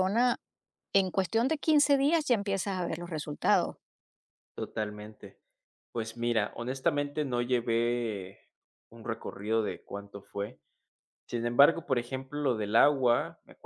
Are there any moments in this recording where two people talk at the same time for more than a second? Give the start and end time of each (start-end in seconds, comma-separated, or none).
none